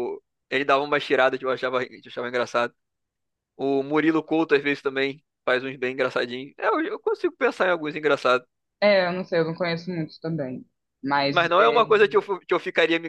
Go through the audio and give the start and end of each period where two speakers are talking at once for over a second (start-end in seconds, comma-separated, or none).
none